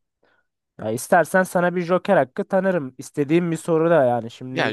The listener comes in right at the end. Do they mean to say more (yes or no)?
yes